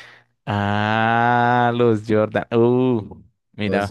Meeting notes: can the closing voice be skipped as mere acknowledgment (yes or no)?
yes